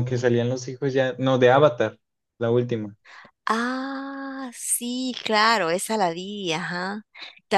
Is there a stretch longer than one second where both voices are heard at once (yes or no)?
no